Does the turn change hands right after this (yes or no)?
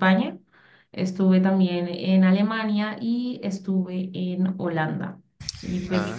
no